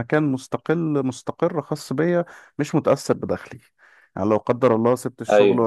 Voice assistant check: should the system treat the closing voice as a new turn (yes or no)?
no